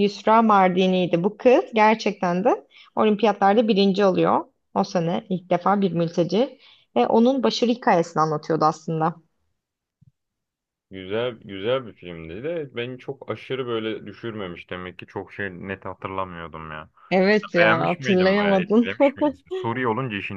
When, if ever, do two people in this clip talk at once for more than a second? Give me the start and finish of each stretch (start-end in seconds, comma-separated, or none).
17.6-18.9